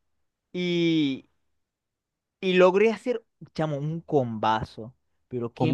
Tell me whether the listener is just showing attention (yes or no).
yes